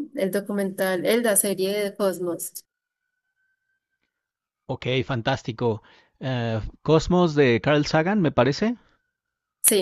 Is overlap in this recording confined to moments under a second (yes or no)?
yes